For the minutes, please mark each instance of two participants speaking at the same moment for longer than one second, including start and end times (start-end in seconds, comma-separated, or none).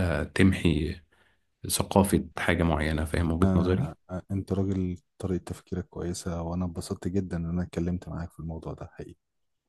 none